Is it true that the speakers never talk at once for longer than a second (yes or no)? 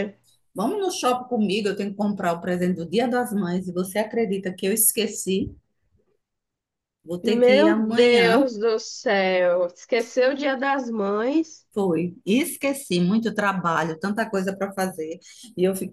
no